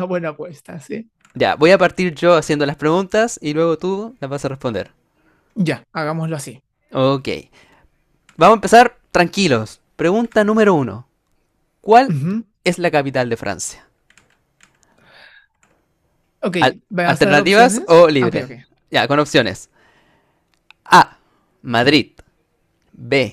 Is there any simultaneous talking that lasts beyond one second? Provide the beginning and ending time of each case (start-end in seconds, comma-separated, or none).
16.6-18.5